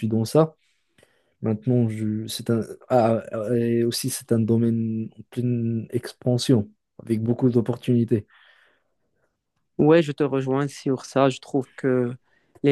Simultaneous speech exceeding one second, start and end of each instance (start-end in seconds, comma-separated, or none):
none